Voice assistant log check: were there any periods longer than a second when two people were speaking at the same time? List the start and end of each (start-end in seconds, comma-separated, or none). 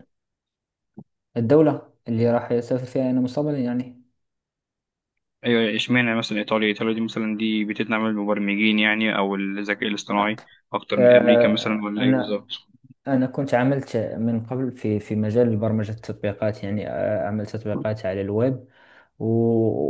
11.0-12.4